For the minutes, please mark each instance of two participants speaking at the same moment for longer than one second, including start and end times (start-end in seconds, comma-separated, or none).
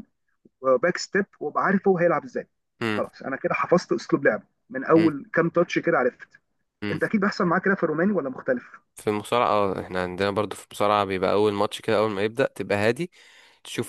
none